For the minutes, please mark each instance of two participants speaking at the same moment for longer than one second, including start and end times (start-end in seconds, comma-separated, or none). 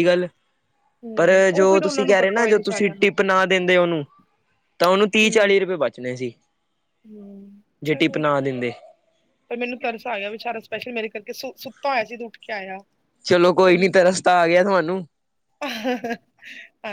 1.2-3.1